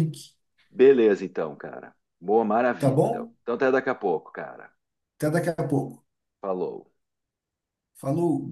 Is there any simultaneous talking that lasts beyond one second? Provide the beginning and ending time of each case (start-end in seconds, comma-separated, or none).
none